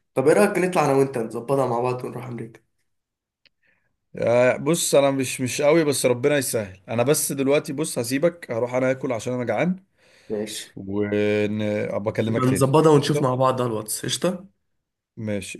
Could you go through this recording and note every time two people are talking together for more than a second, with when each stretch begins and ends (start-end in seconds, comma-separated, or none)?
12.3-13.5